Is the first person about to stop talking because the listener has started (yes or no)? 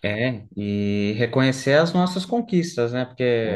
no